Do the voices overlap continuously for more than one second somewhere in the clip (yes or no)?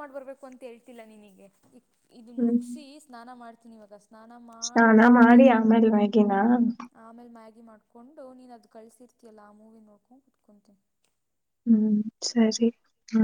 no